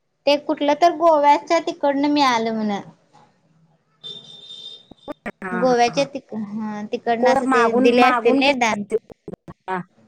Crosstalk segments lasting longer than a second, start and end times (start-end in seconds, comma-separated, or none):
7.2-8.8